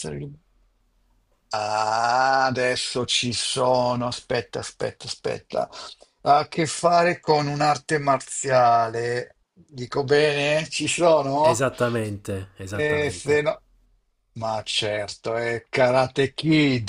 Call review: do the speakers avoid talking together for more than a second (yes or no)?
yes